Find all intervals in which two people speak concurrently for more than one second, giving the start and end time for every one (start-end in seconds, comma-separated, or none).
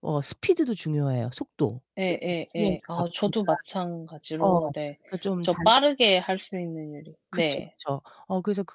2.0-3.5